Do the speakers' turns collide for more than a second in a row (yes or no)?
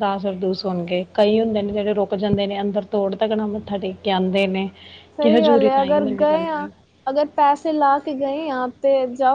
yes